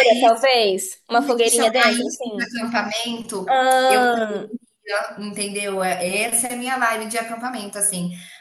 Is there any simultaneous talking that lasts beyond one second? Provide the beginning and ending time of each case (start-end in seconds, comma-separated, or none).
1.1-2.6